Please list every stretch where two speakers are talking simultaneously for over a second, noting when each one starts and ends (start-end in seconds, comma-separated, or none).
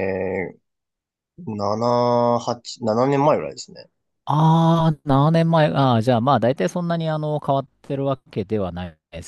none